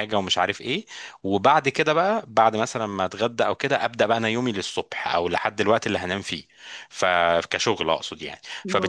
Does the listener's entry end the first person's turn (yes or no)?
no